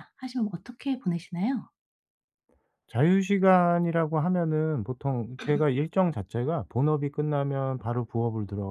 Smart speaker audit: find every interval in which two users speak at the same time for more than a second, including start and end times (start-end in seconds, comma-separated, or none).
none